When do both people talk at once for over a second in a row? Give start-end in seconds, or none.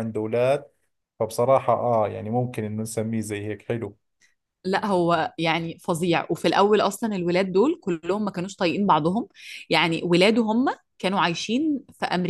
none